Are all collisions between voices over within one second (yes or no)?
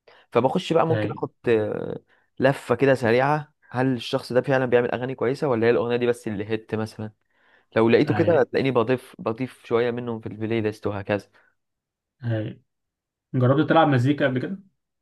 yes